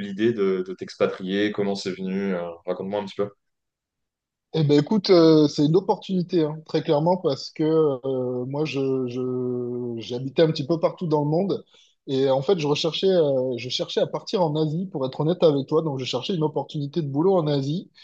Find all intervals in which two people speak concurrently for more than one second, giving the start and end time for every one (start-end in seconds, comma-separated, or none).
none